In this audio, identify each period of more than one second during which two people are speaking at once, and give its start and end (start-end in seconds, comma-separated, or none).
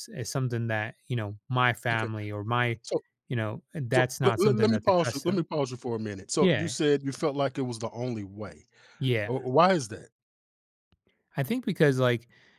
3.9-5.5